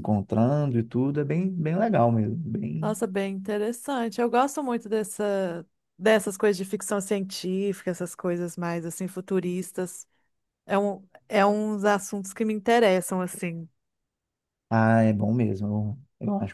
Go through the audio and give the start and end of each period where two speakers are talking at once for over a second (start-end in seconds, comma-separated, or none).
none